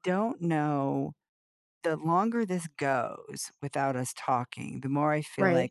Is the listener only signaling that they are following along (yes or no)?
yes